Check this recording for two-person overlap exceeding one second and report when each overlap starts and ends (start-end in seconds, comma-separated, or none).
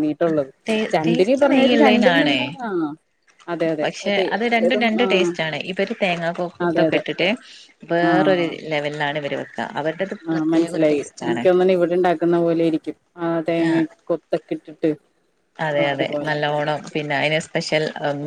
1.0-2.4